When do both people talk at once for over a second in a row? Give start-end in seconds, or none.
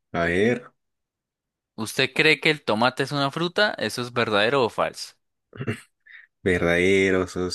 none